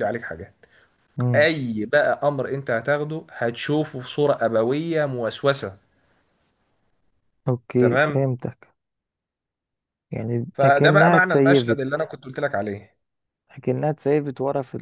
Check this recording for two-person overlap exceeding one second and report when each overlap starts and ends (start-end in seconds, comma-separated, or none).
10.5-12.1